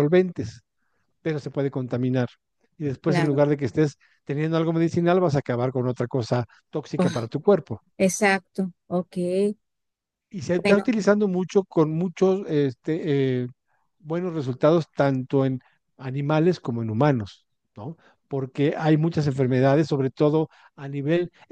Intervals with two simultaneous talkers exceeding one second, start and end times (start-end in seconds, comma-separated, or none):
none